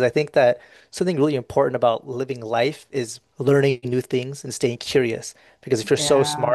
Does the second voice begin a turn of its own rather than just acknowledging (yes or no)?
no